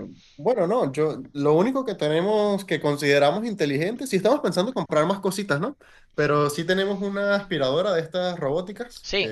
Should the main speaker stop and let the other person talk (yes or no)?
yes